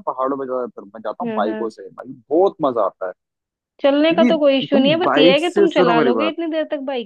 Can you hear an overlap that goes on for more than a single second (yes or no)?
yes